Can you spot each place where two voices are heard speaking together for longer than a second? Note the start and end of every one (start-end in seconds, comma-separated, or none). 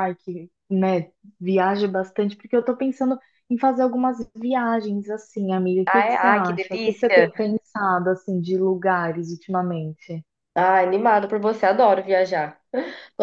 5.9-7.3